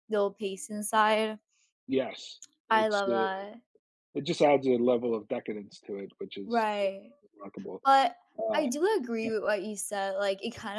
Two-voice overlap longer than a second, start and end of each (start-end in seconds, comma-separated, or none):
none